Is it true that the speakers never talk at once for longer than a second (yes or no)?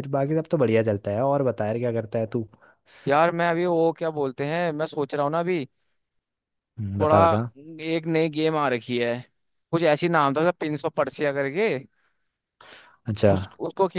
yes